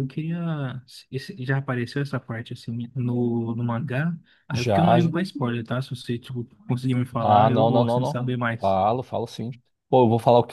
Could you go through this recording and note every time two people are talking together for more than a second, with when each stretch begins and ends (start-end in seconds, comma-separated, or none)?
7.2-8.8